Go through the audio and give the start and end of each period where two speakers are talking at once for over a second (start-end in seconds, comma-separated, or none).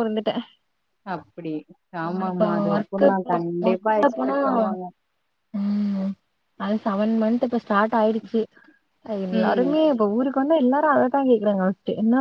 2.1-4.4